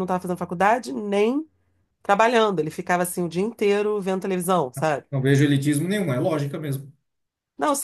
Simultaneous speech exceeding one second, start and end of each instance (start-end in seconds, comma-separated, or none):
none